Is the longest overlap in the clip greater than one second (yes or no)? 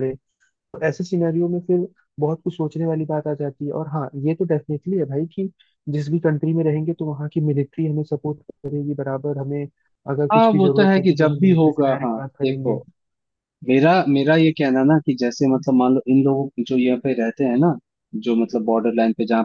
yes